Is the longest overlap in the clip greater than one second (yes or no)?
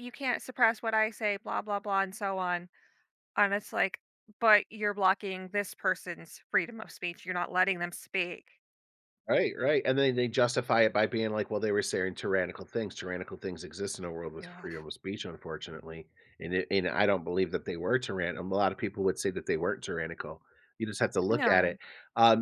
no